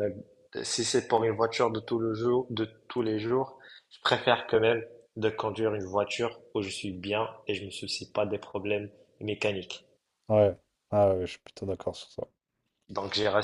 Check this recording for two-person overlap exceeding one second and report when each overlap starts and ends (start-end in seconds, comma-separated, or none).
none